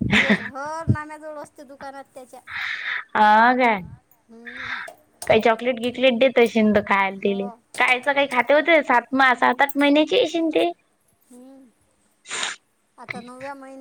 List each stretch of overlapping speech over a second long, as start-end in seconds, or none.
none